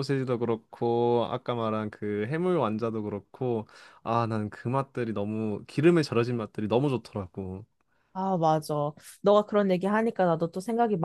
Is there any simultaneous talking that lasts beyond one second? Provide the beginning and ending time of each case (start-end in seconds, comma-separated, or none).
none